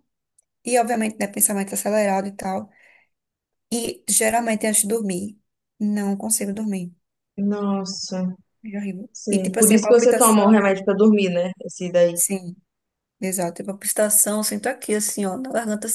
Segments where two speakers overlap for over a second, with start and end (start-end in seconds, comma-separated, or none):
9.1-10.5